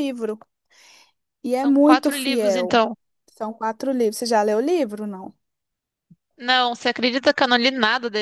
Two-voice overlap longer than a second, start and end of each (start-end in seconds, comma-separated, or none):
1.5-2.8